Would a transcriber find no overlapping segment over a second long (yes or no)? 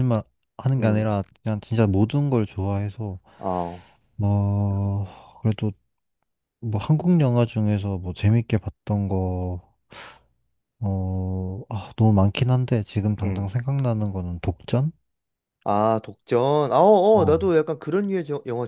yes